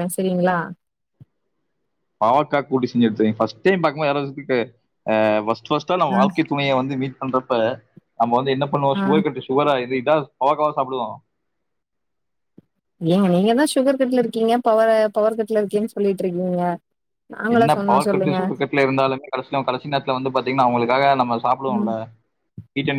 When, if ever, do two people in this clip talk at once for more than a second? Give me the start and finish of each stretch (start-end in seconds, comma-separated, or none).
none